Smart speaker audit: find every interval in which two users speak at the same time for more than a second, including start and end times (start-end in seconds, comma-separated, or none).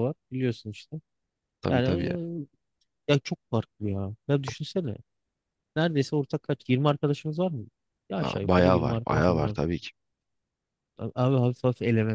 8.2-9.6